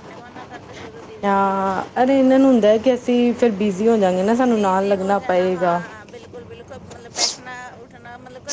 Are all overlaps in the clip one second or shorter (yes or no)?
no